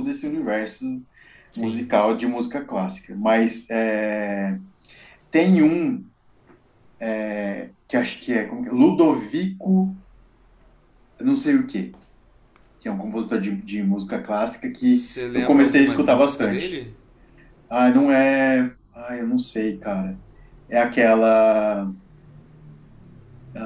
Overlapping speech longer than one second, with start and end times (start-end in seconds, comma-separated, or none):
14.8-16.9